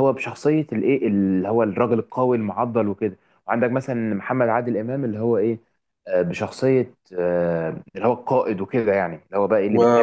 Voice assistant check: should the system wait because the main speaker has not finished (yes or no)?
no